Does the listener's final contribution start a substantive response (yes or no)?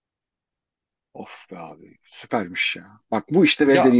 no